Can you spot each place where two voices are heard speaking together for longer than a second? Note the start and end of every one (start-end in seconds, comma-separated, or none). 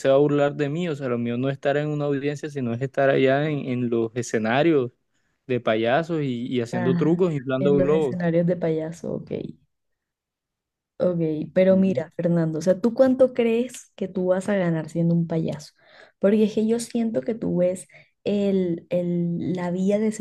6.7-8.3